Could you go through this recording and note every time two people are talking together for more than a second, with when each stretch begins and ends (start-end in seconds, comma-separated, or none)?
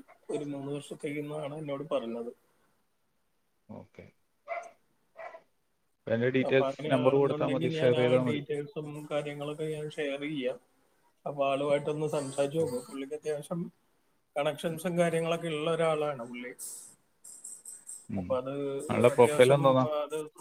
6.5-8.4